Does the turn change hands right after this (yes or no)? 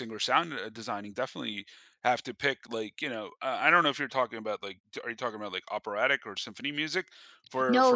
yes